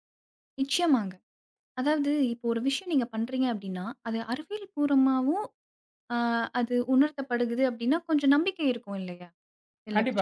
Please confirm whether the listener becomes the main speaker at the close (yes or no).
yes